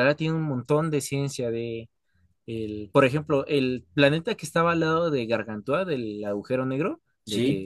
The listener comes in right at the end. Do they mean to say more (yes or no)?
no